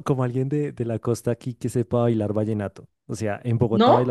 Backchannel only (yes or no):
yes